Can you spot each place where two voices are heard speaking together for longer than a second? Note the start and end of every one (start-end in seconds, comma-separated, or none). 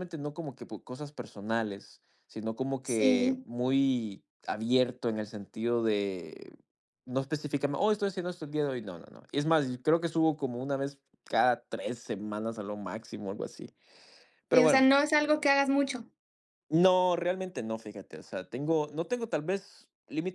none